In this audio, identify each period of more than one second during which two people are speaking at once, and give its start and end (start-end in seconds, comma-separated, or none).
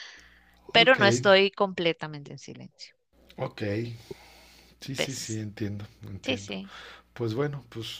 none